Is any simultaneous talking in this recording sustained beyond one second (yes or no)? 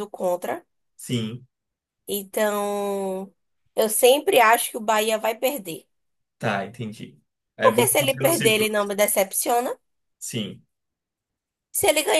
yes